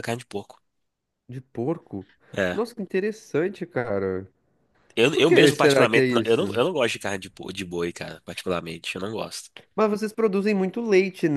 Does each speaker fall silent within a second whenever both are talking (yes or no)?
no